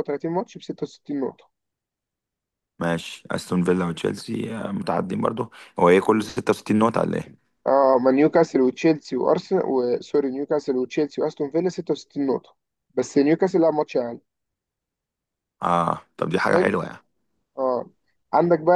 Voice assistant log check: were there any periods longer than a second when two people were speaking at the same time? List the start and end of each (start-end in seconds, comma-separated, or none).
none